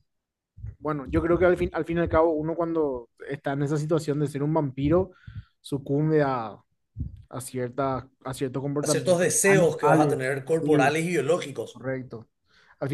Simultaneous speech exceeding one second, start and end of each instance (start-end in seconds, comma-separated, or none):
8.8-10.9